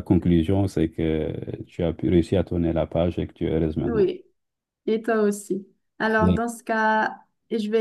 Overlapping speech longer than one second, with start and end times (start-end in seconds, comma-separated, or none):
none